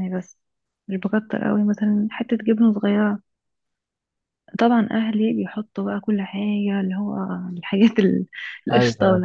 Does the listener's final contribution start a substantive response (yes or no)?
no